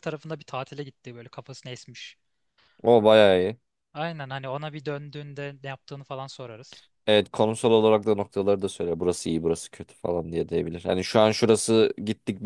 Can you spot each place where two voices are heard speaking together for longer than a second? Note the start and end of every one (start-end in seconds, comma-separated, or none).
none